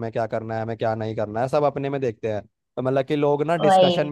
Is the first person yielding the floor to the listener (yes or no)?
no